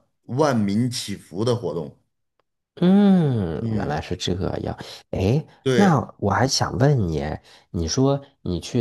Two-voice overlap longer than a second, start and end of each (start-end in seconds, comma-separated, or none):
none